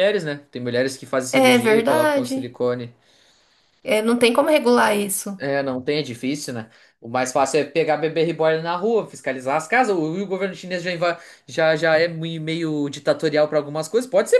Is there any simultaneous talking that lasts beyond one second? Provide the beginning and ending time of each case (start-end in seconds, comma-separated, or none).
1.3-2.6